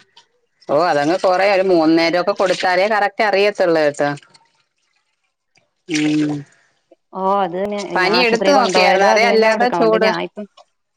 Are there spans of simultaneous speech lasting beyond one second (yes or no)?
yes